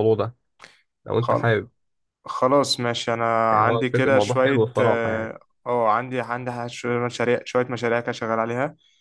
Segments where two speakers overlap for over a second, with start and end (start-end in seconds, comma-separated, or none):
3.5-5.3